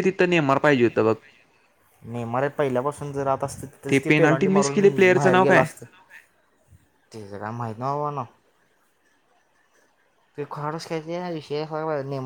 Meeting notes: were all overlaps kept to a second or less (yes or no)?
no